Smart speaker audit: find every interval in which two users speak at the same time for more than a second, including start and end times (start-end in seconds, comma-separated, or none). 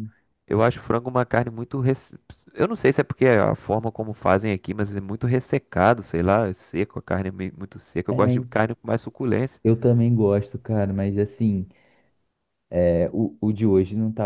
none